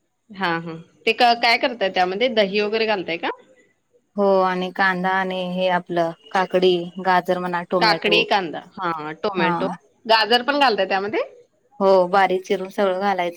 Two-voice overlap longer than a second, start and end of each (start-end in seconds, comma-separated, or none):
none